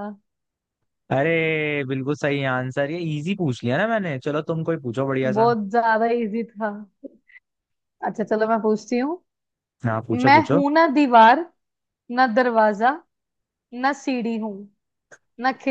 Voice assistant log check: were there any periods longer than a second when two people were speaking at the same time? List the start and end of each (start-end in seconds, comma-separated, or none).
none